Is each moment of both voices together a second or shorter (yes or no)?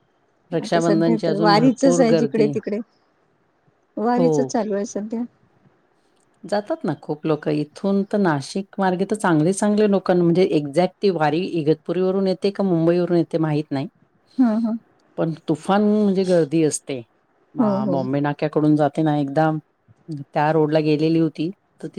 no